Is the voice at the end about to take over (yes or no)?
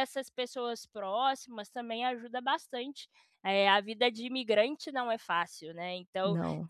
no